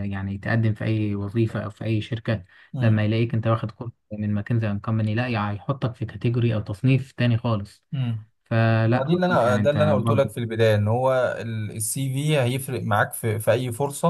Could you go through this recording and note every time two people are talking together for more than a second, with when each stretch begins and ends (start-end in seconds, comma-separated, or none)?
8.9-10.3